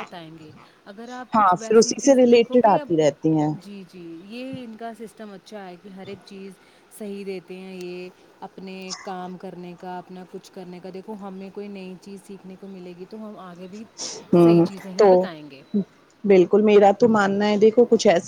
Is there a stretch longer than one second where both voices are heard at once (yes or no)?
yes